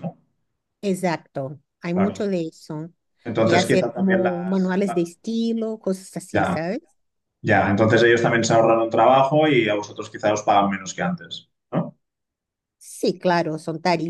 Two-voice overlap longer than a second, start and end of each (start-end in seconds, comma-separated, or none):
3.4-5.1